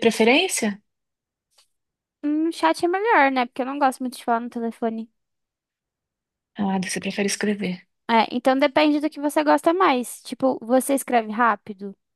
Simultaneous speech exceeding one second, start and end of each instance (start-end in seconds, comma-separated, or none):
none